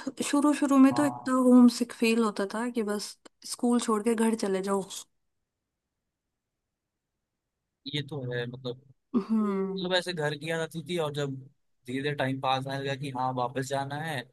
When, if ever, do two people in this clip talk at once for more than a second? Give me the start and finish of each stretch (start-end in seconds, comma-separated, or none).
none